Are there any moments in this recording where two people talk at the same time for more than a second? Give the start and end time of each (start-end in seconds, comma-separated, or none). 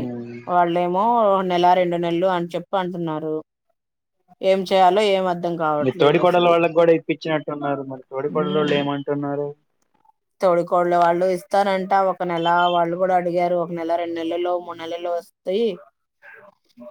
none